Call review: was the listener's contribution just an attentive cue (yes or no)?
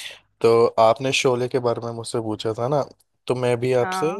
yes